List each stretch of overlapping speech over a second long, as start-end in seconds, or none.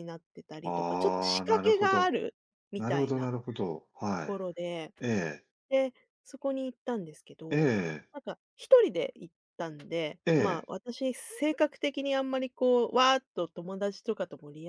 0.6-2.2